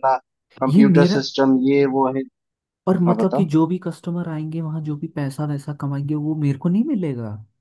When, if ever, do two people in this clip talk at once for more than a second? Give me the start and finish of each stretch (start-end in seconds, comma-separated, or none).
none